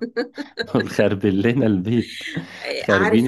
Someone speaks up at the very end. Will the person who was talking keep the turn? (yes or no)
no